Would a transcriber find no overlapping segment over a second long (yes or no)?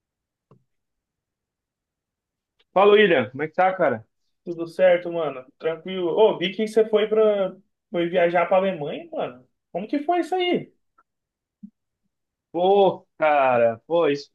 yes